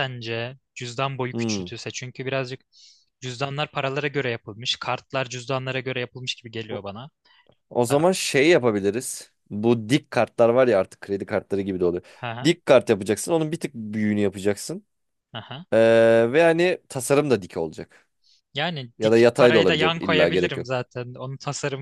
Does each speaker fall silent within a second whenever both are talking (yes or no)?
no